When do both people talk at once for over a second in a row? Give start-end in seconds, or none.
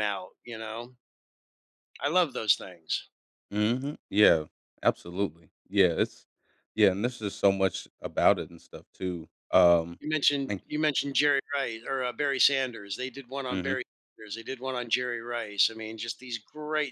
none